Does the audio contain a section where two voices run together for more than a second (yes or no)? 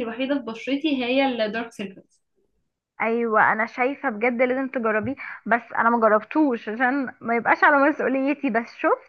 no